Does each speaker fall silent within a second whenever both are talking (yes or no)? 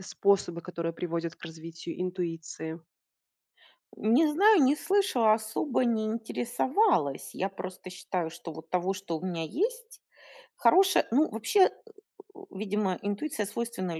yes